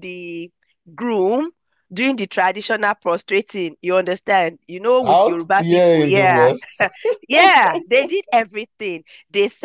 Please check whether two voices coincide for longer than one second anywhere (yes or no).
yes